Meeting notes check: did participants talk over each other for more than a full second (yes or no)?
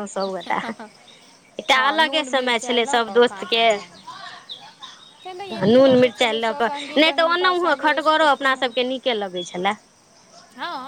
yes